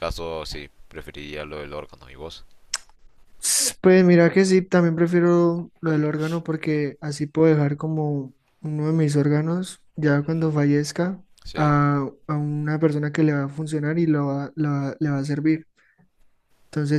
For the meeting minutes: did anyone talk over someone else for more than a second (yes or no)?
no